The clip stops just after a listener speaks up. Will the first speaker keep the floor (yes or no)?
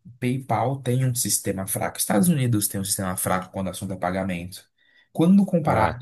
yes